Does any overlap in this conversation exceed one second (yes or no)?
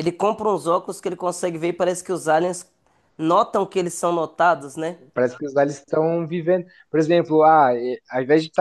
no